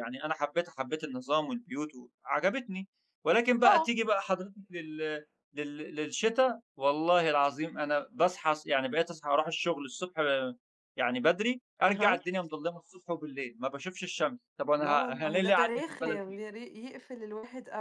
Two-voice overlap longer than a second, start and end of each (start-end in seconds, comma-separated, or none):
14.8-16.4